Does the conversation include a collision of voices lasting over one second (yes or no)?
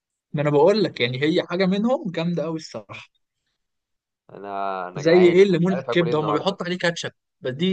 yes